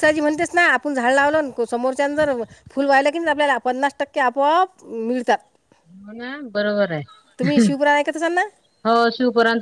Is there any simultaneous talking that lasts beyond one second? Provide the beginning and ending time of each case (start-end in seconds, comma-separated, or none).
none